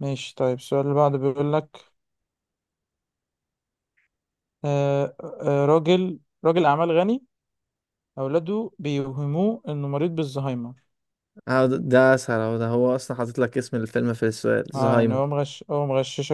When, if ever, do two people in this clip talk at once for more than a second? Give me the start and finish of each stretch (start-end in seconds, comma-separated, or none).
none